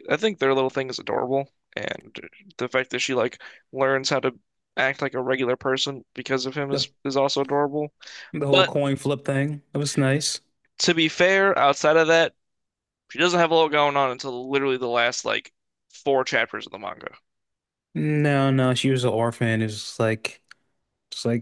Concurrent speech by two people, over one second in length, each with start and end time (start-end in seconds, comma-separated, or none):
none